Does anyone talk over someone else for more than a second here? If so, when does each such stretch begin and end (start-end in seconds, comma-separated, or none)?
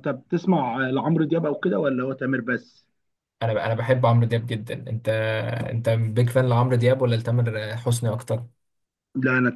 none